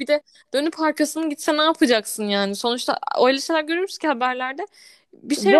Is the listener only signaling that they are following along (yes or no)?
no